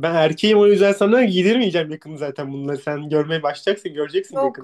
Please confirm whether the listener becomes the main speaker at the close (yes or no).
yes